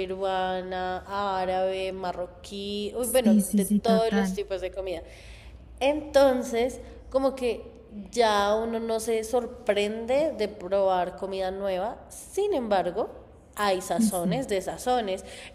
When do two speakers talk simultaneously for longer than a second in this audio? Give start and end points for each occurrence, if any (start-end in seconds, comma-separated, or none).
3.0-4.4